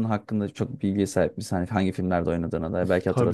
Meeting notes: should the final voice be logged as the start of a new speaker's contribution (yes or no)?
yes